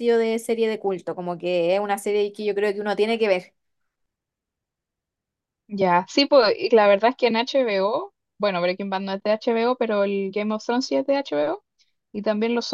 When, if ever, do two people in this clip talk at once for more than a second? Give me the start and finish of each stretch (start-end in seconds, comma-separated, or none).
none